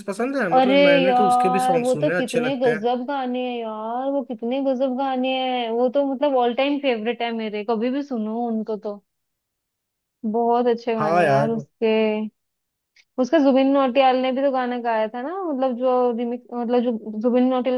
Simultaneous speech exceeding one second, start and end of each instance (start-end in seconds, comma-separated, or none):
0.5-2.9